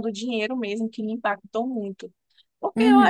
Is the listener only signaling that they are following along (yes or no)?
no